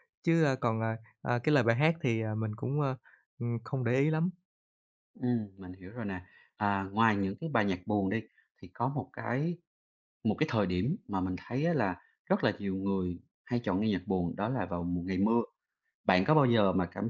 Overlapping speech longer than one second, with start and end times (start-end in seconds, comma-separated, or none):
none